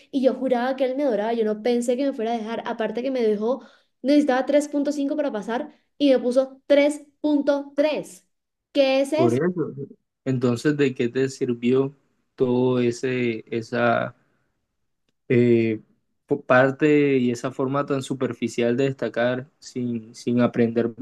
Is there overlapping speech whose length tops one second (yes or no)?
no